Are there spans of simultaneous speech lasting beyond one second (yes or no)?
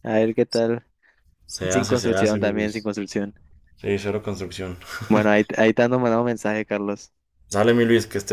yes